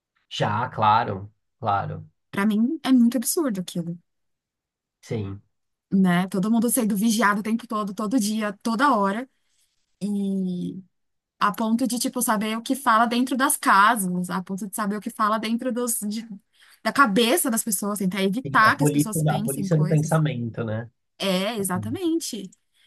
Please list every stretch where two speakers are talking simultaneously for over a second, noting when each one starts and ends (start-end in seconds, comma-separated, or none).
18.4-20.2